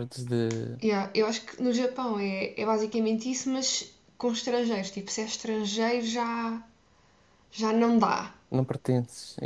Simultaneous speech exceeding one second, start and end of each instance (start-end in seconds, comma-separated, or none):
none